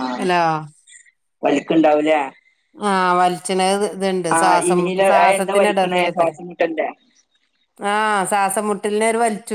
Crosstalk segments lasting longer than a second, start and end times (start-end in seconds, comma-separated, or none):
4.4-6.3